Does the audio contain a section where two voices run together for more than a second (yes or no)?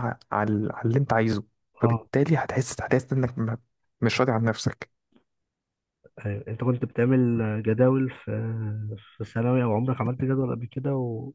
no